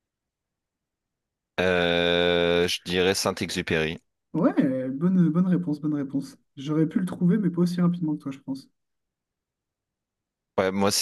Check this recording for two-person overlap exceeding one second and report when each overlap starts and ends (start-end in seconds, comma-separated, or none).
none